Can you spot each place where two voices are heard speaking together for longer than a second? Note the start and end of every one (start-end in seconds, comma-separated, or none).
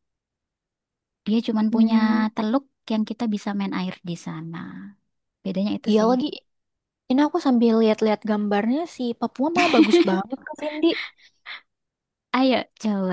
none